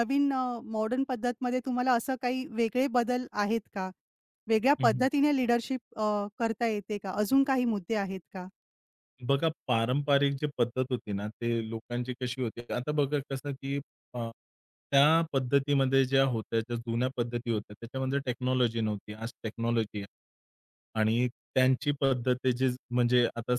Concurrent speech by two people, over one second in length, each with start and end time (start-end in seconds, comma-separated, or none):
none